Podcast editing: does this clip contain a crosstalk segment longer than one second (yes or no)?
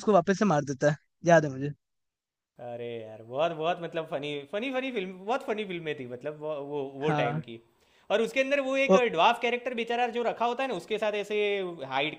no